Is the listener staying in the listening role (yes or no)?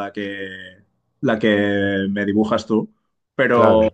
yes